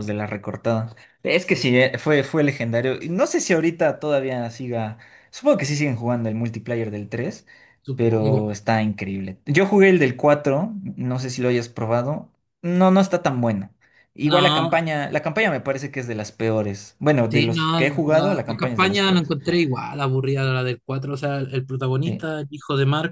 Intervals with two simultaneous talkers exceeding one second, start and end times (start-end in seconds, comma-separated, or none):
17.3-19.3